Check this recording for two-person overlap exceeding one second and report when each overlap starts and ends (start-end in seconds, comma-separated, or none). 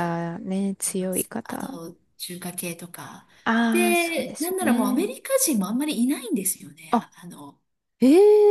3.7-5.1